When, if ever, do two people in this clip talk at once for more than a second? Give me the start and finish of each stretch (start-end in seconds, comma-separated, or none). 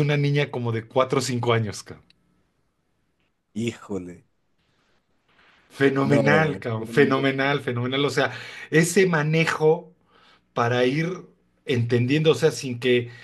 6.0-7.5